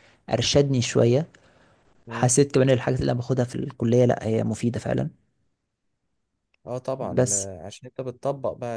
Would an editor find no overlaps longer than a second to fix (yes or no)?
yes